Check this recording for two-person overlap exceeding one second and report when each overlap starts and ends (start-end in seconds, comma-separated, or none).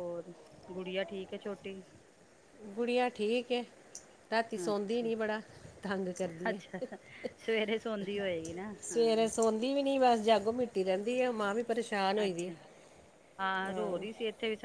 none